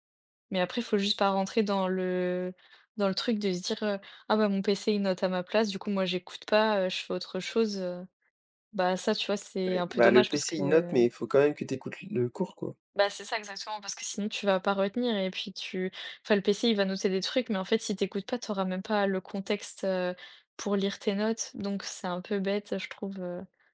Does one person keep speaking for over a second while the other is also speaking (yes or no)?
yes